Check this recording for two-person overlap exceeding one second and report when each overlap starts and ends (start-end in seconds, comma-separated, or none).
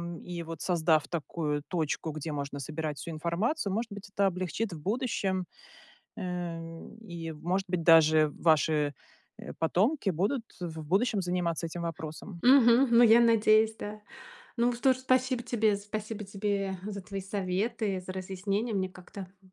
none